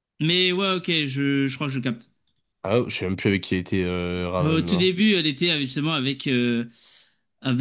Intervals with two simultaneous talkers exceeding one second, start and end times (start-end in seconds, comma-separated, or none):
none